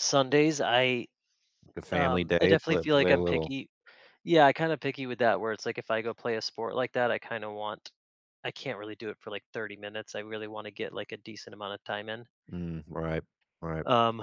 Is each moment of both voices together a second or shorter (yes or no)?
no